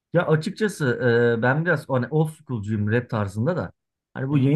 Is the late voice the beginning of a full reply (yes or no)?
no